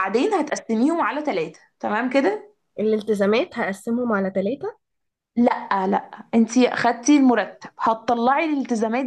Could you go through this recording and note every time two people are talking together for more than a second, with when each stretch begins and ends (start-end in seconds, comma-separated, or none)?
none